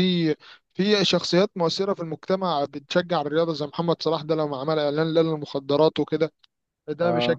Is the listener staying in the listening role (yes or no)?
yes